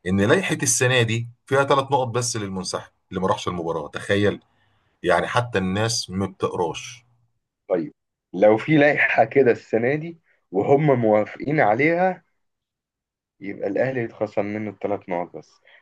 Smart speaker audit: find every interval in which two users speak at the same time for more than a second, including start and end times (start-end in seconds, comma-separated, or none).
none